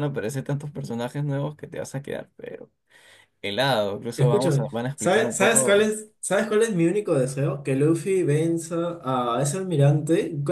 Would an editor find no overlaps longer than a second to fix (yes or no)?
no